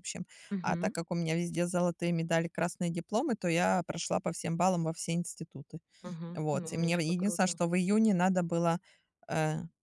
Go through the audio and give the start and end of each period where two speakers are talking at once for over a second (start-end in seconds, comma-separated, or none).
6.3-7.6